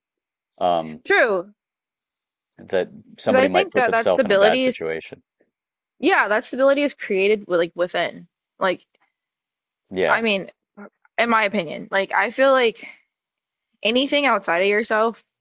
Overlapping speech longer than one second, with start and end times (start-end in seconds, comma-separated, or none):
3.2-4.9